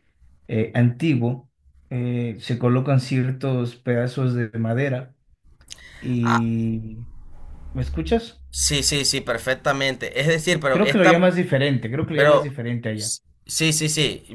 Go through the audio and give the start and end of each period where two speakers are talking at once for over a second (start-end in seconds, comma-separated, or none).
none